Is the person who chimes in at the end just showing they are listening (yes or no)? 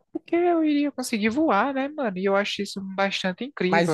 no